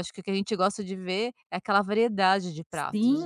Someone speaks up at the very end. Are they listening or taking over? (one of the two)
taking over